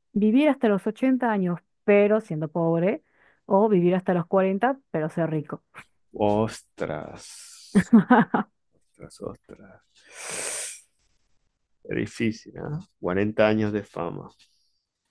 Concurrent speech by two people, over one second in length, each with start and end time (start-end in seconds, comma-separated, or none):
none